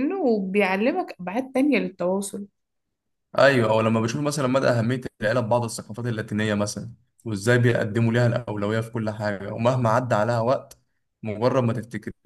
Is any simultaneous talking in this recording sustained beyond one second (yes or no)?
no